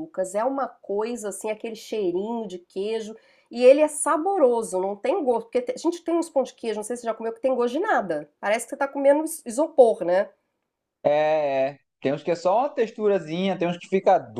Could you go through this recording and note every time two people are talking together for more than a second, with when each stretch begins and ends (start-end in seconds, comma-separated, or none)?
none